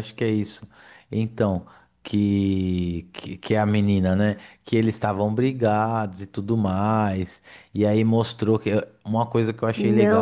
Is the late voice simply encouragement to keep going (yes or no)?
no